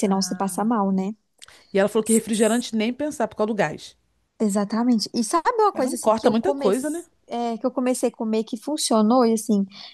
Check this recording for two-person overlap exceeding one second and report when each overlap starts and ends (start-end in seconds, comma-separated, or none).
5.7-7.0